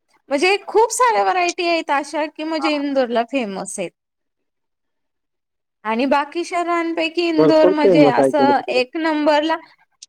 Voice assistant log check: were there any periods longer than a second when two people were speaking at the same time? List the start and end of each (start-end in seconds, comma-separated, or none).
7.4-8.8